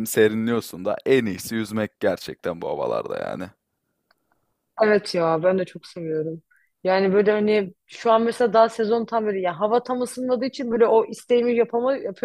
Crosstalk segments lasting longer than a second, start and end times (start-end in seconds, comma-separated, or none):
none